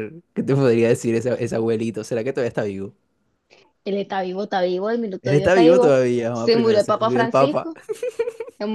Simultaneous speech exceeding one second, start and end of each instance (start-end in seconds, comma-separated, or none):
5.2-7.7